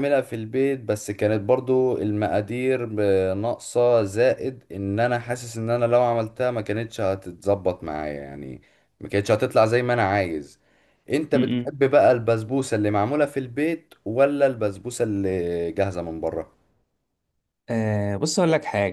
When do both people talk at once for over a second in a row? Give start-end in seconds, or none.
none